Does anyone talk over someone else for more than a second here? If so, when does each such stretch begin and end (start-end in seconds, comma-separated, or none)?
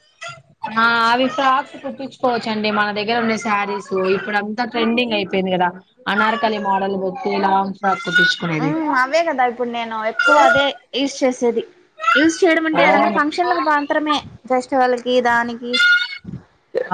none